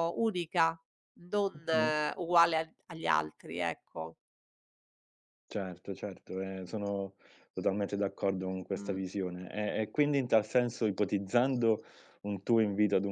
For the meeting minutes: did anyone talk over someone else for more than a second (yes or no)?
no